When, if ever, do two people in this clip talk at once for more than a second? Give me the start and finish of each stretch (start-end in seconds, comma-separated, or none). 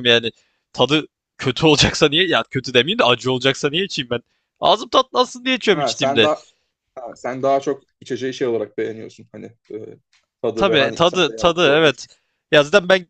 10.5-12.1